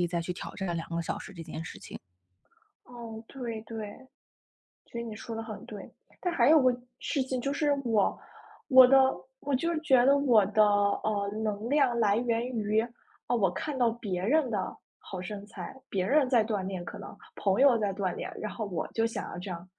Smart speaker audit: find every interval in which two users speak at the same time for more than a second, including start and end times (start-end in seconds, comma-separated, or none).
none